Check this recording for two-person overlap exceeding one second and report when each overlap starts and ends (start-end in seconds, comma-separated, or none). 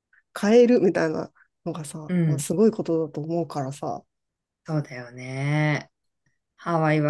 none